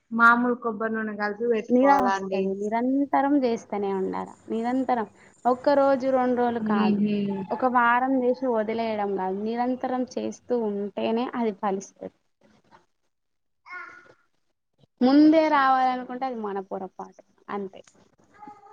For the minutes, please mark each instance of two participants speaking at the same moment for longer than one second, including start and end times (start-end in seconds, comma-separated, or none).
none